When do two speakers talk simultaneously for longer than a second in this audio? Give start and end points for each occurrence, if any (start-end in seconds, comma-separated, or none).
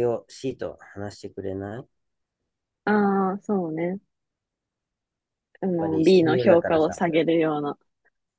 5.8-7.1